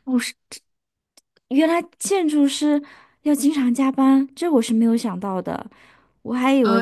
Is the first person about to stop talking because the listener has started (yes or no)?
no